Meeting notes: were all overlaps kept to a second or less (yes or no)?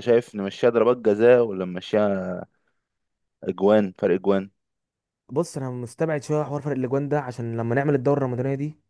yes